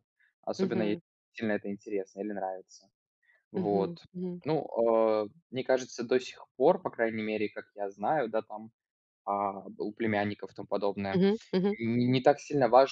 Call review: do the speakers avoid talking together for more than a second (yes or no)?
yes